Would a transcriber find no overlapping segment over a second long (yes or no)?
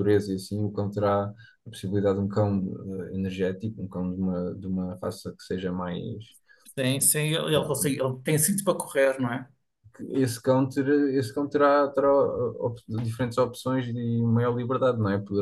yes